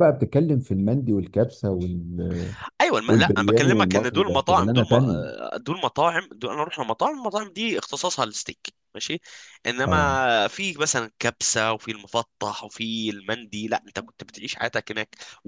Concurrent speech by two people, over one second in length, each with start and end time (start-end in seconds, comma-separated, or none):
3.1-5.2